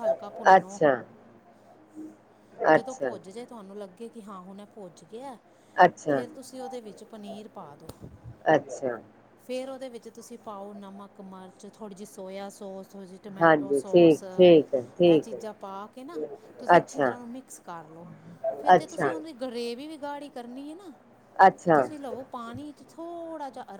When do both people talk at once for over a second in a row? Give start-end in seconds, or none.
13.4-15.4